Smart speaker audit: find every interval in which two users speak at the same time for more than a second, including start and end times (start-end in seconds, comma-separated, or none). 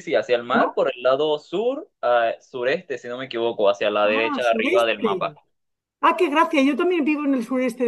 4.0-5.3